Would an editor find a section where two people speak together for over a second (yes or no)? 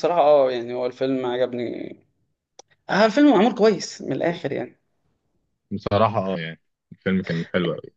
no